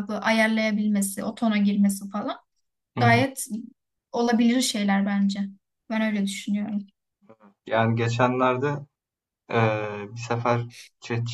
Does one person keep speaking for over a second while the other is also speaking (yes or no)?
no